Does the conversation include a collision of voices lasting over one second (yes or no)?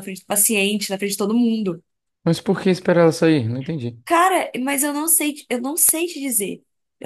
no